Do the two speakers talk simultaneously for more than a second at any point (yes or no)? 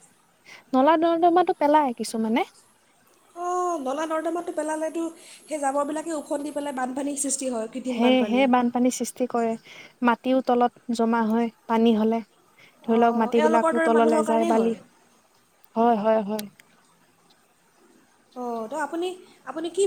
yes